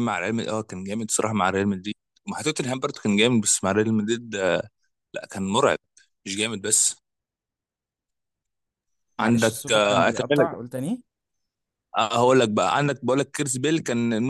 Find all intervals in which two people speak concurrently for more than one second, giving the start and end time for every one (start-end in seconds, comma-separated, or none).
9.2-10.5